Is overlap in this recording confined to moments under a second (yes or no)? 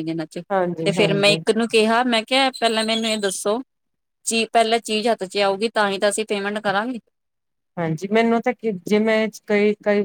yes